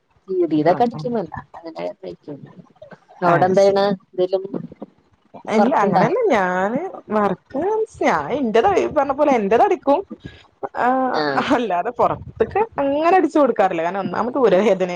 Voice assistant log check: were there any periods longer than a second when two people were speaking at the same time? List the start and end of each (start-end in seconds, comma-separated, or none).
none